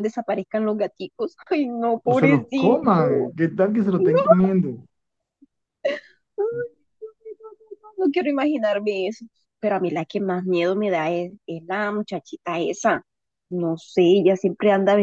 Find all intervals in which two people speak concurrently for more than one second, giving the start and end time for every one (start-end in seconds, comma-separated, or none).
2.1-3.3